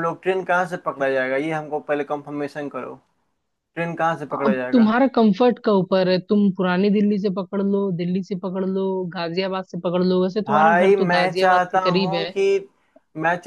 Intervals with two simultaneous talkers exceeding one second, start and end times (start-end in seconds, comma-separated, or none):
10.5-12.3